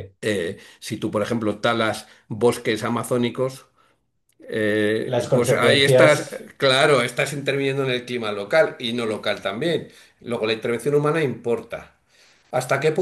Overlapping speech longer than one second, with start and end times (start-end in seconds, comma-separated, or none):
5.0-6.5